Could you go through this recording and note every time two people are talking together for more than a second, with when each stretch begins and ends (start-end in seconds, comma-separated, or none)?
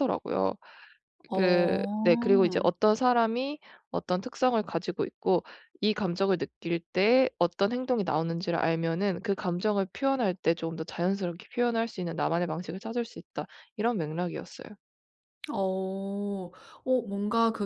1.3-2.7